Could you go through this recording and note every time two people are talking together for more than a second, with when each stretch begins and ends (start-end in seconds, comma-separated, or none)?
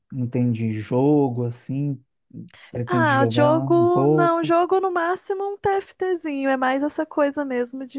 2.9-4.5